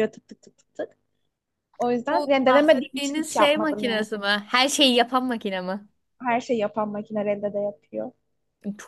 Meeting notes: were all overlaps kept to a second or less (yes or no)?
no